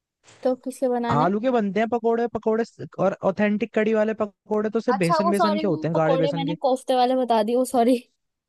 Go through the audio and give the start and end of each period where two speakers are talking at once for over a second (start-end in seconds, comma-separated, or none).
4.9-6.5